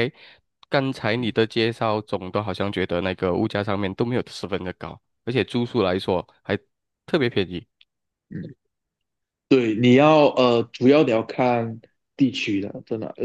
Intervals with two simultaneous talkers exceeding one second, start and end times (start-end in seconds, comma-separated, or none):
none